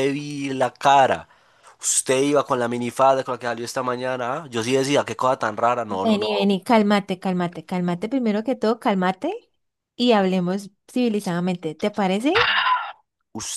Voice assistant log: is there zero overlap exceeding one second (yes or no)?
yes